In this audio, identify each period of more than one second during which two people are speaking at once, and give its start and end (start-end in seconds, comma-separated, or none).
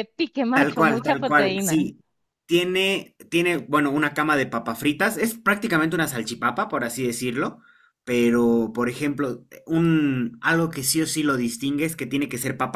0.5-1.9